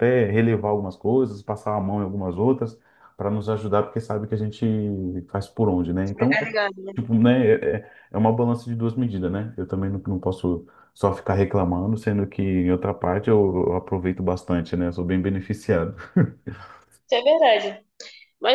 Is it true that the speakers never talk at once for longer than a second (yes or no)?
yes